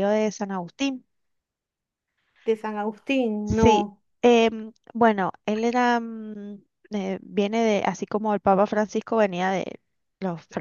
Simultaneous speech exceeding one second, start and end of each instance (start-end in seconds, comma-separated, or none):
none